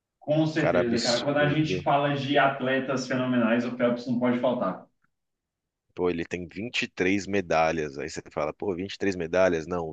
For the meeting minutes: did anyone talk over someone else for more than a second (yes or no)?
yes